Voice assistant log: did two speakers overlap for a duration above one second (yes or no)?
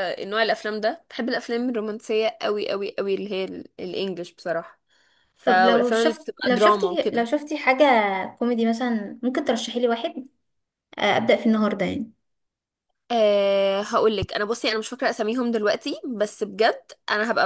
yes